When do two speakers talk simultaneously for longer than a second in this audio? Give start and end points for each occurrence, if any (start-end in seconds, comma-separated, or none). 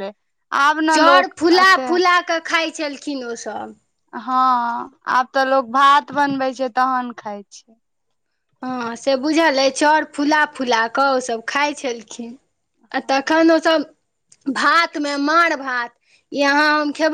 none